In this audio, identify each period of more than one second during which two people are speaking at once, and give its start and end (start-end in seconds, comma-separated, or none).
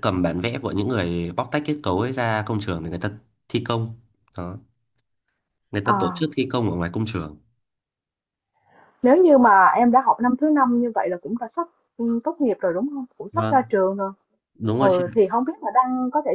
none